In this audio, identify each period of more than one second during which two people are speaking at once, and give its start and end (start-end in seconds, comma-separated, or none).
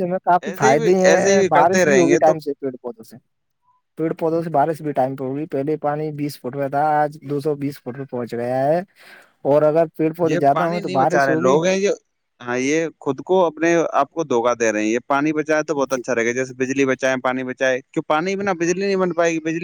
0.7-2.3, 10.3-11.6